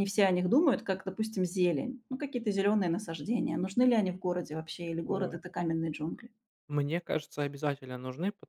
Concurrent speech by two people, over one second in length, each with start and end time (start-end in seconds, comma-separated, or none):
none